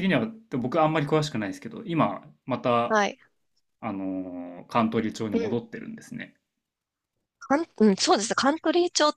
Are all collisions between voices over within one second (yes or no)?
yes